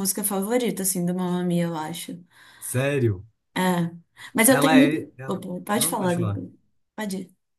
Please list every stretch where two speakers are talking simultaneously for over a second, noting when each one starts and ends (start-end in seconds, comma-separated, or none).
4.5-6.4